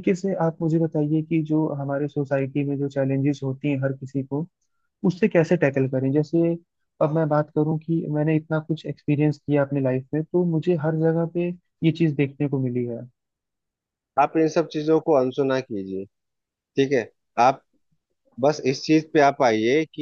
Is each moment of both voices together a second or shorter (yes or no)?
yes